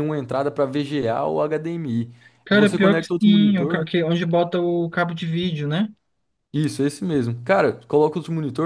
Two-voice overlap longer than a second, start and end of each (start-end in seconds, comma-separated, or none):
2.5-3.8